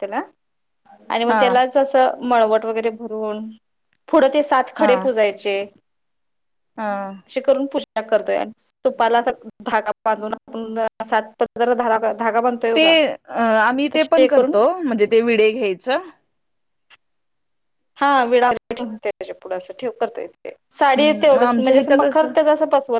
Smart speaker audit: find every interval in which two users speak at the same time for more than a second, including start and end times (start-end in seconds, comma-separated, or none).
21.0-22.3